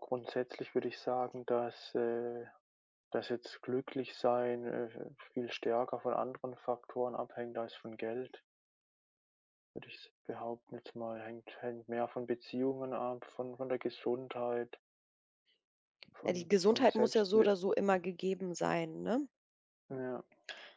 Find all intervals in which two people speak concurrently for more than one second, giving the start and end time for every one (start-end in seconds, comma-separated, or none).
16.2-17.5